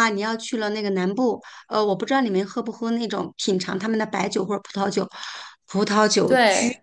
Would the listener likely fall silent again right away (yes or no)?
yes